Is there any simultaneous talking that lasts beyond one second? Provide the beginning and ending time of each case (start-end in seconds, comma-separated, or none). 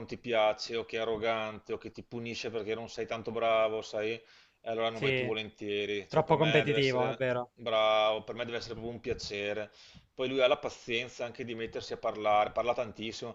6.1-7.5